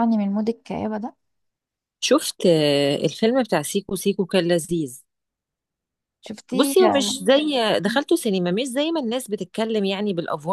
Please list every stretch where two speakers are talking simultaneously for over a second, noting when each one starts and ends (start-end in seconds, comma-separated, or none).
none